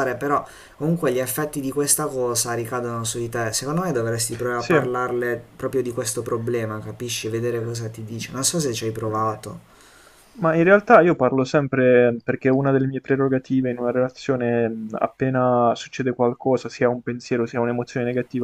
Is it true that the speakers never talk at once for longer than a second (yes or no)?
yes